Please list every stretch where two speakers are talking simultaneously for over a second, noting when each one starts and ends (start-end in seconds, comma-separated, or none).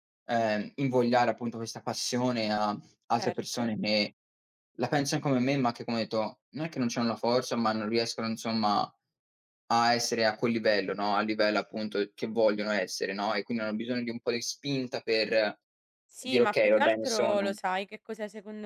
16.2-17.4